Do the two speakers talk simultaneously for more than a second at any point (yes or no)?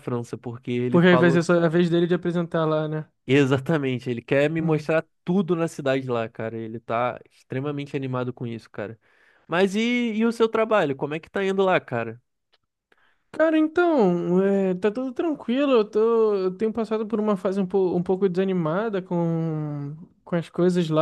no